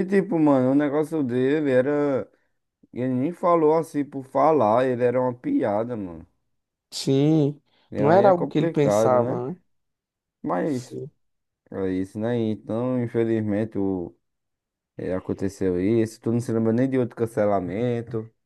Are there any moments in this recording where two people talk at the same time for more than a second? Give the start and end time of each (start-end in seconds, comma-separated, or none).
8.0-9.4